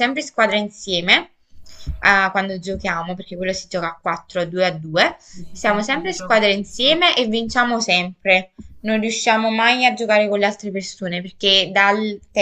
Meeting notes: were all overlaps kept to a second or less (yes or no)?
no